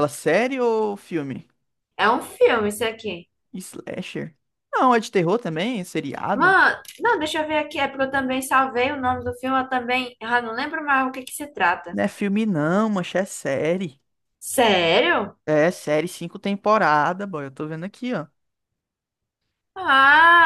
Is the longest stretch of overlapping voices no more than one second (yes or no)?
yes